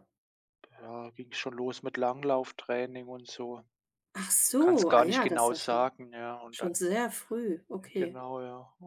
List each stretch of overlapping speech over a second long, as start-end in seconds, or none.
4.6-5.9